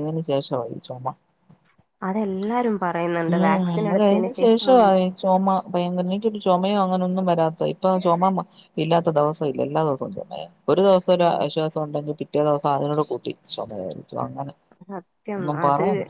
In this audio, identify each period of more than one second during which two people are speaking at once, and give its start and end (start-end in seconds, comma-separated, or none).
3.3-4.7